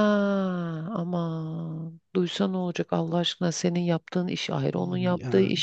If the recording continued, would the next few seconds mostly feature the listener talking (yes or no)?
no